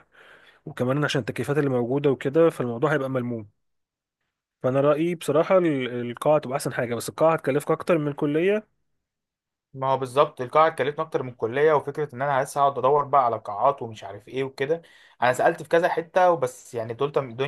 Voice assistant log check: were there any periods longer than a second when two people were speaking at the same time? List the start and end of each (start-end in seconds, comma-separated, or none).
none